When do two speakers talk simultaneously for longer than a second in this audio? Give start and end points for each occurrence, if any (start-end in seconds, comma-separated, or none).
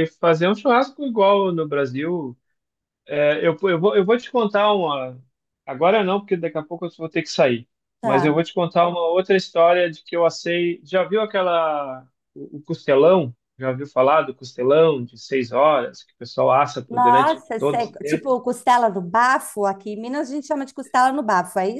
16.9-18.3